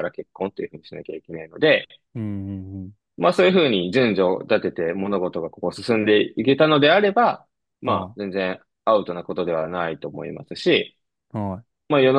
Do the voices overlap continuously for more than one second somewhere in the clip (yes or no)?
no